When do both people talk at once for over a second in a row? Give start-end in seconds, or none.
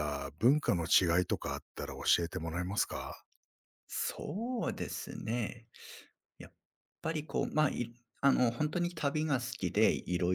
none